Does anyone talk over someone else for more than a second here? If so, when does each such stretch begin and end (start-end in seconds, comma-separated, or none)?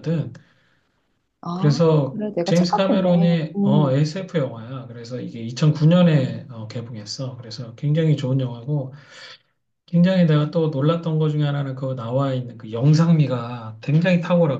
1.5-4.0